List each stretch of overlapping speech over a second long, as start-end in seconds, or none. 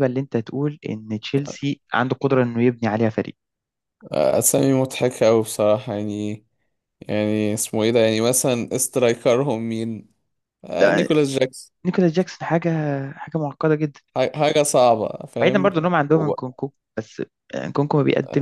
none